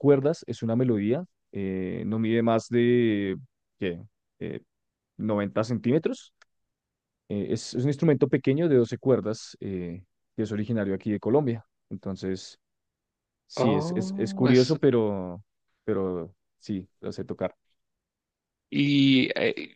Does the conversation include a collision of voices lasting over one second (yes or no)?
yes